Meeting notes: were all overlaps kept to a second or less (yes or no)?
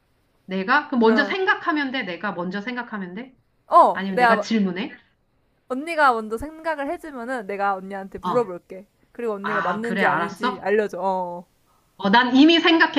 no